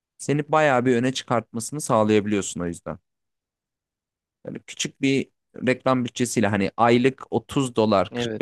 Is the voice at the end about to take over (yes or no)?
no